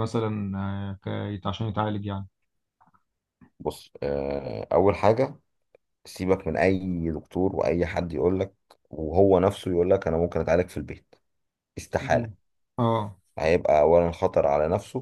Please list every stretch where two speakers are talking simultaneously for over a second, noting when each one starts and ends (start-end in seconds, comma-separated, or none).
none